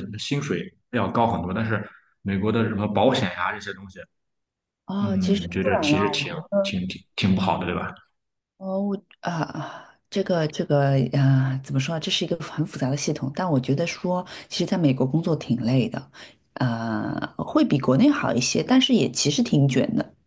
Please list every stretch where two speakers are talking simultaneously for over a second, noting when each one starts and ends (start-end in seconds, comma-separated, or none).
5.0-6.8